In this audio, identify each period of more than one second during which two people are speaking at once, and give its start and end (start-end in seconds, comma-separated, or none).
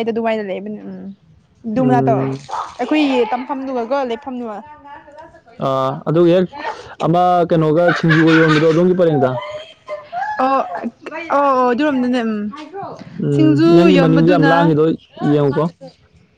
13.3-14.7